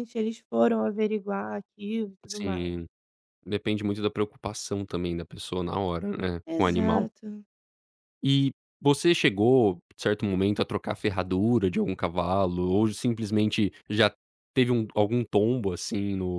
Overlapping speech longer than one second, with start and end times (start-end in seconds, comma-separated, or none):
none